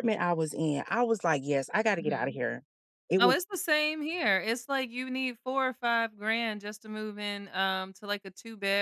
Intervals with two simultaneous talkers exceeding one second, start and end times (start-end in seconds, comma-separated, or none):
none